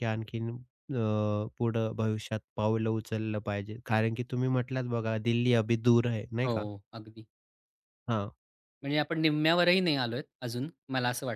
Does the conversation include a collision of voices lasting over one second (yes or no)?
no